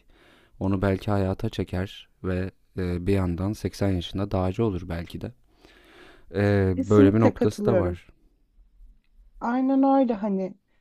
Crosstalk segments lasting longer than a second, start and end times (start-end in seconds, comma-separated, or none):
6.7-8.0